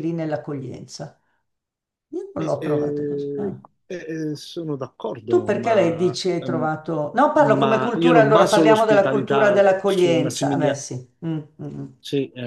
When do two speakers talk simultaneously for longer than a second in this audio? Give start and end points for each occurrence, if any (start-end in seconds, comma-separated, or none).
2.4-3.6, 5.3-6.7, 7.3-10.8